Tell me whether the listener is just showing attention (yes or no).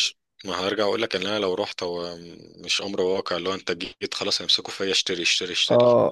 no